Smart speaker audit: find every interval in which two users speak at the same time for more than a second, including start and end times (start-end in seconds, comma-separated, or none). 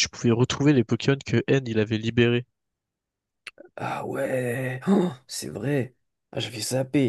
none